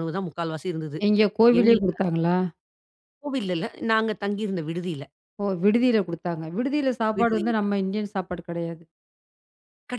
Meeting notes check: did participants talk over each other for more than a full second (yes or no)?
no